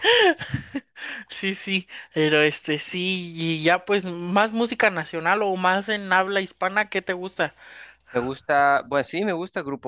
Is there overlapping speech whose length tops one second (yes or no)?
no